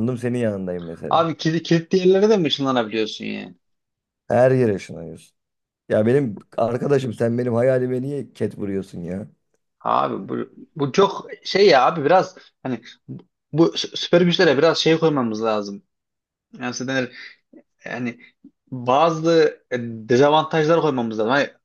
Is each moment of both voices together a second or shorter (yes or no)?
yes